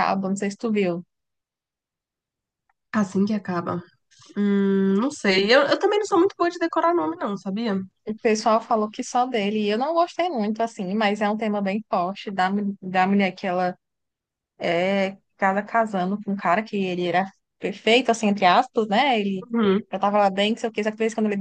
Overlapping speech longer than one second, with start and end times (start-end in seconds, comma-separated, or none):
none